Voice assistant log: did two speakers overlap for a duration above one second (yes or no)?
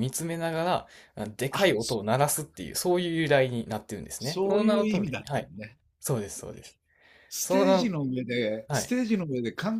yes